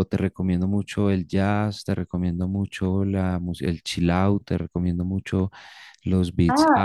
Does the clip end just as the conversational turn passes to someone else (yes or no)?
yes